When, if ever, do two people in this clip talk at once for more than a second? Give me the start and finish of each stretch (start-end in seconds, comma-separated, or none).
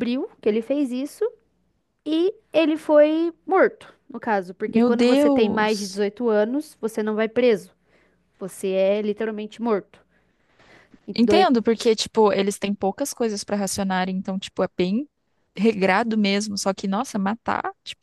4.8-6.0